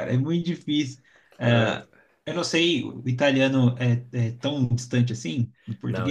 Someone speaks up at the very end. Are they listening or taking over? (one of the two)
taking over